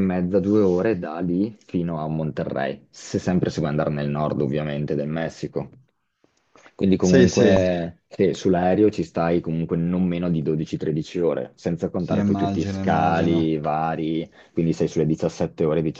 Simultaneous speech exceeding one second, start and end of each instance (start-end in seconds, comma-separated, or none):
12.0-13.5